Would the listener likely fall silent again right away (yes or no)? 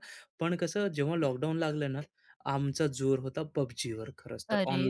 no